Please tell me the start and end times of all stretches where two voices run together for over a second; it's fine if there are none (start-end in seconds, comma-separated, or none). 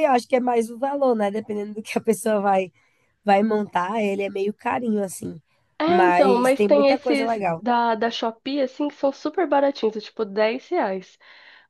5.8-7.7